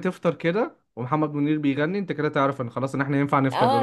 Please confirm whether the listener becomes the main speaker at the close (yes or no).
yes